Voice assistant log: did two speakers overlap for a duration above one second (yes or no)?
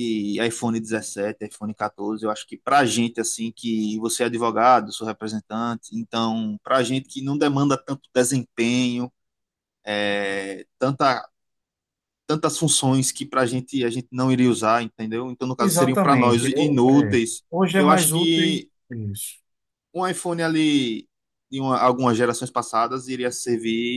yes